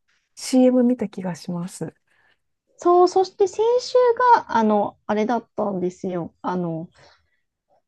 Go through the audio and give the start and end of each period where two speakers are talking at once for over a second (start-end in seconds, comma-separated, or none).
none